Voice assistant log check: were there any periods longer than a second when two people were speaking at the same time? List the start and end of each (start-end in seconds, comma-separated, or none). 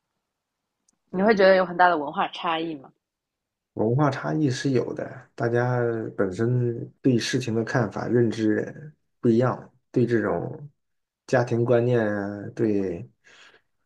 none